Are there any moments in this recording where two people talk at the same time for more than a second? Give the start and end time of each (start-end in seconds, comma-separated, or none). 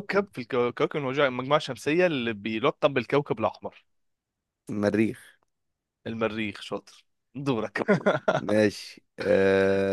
none